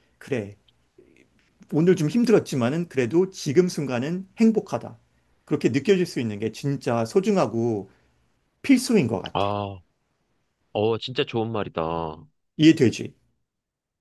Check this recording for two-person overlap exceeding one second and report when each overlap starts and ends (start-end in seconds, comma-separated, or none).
none